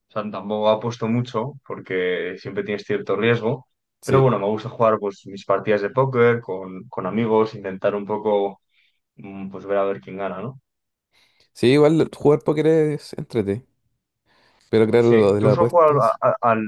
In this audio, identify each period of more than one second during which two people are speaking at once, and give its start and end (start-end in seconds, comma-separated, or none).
15.0-16.2